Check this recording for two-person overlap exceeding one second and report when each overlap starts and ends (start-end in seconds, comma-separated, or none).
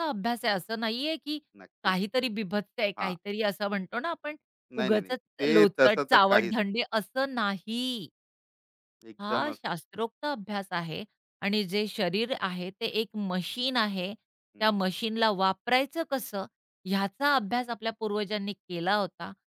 4.8-6.5